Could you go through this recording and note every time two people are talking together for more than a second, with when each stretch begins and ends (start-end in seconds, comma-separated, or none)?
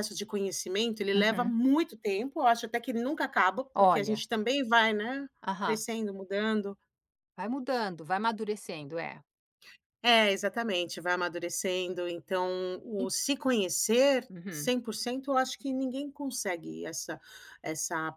none